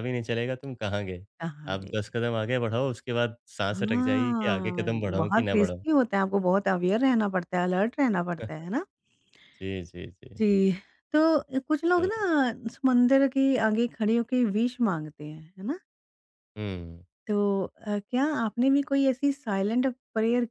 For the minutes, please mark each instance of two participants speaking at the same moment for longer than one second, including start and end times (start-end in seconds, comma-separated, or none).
3.7-5.8